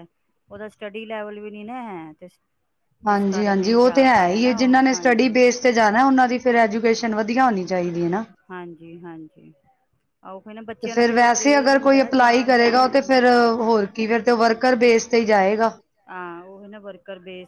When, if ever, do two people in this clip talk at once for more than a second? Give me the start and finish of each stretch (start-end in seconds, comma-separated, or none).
3.1-5.4, 11.8-13.3